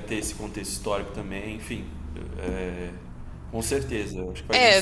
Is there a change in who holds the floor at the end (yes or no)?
yes